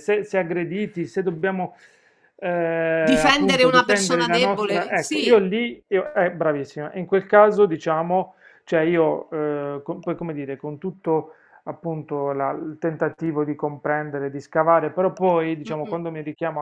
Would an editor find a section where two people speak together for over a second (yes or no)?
yes